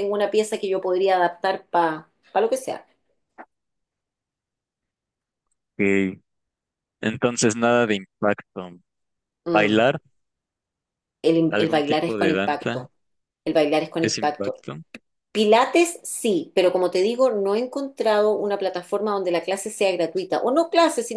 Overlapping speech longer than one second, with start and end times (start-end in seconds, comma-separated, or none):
11.5-12.9